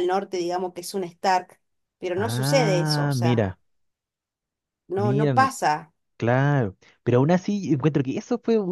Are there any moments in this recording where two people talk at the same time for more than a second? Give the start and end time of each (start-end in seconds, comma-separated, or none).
2.2-3.6